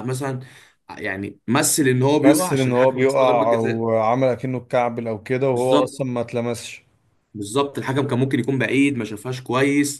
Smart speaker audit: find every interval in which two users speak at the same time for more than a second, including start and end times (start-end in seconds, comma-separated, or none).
2.2-3.8